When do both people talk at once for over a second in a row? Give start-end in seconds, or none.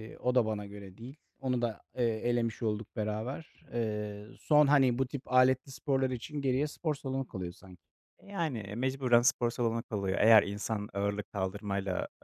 none